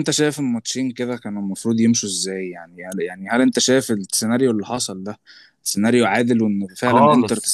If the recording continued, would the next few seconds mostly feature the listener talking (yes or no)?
yes